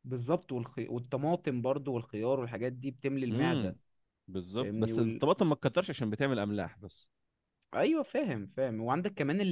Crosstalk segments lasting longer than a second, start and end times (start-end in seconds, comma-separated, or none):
none